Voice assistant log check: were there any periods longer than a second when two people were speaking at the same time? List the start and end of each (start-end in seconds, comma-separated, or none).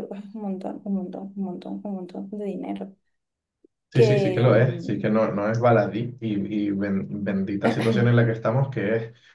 3.9-5.2